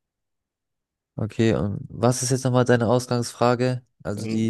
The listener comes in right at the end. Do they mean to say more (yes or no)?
yes